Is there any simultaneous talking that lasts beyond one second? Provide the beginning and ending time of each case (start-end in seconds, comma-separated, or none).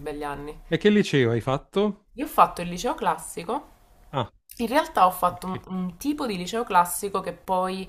none